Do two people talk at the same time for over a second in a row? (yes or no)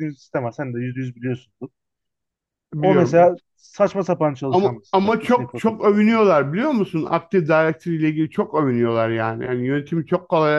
yes